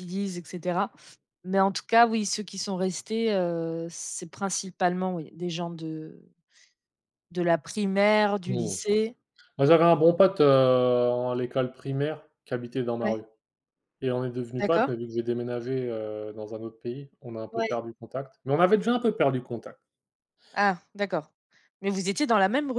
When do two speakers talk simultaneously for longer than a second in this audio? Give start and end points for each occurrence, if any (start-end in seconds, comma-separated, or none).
none